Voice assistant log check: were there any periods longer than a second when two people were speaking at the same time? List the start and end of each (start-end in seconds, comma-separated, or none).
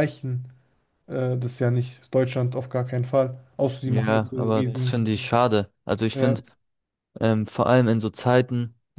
3.9-5.1